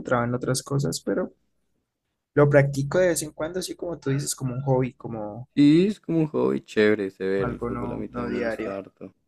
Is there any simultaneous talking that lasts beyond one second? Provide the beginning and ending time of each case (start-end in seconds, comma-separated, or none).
7.4-8.7